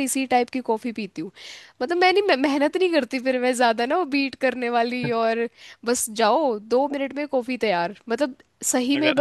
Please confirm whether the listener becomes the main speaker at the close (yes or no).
no